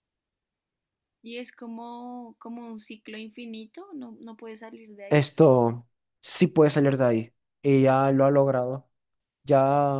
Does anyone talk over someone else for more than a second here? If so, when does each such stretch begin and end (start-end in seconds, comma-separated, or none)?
none